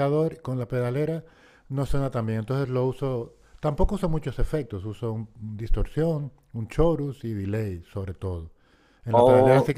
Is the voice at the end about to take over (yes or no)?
yes